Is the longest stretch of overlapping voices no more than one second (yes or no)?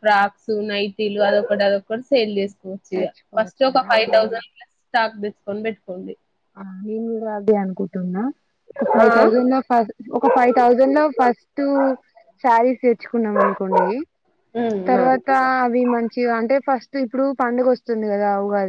yes